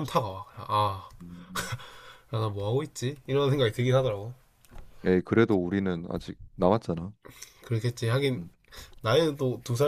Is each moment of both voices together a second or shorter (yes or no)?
yes